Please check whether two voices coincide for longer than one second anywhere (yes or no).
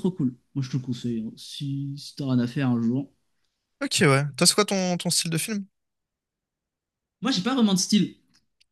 no